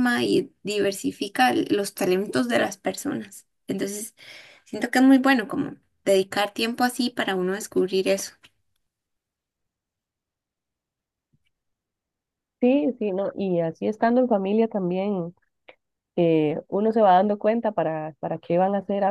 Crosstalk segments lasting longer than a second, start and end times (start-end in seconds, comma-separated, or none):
none